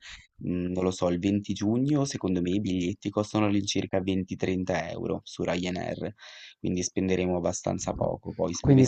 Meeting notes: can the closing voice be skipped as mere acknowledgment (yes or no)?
no